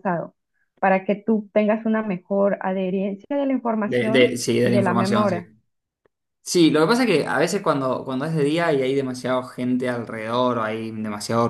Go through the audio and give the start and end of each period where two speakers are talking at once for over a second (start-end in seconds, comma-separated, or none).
3.8-5.4